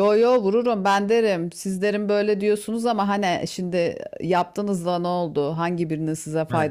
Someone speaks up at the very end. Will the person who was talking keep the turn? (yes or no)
yes